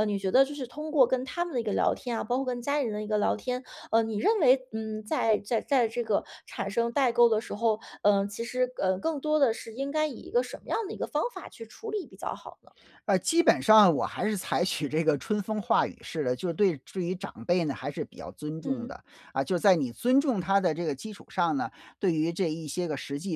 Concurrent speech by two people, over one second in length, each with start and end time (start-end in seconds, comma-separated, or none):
none